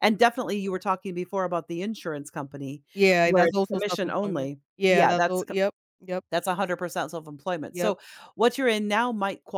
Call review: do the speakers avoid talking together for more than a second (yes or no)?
no